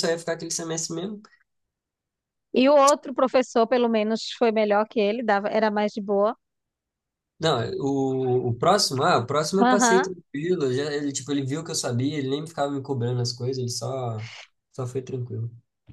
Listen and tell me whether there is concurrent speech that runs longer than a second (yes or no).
no